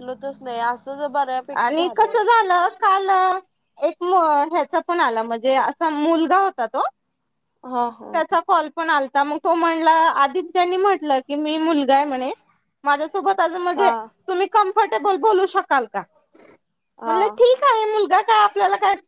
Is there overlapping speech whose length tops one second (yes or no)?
no